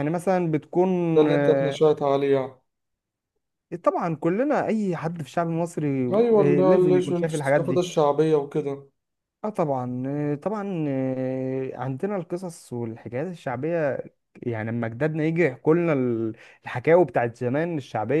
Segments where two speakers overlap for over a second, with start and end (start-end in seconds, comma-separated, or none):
6.1-7.9